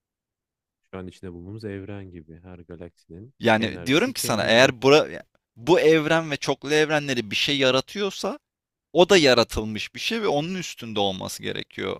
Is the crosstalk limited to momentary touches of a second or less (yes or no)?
no